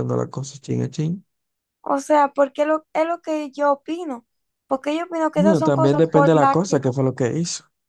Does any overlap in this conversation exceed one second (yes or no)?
yes